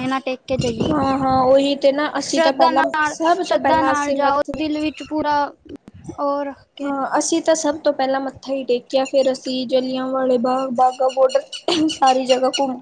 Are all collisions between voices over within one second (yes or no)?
no